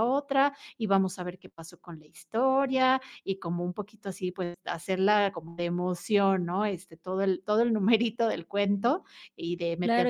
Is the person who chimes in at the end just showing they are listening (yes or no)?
no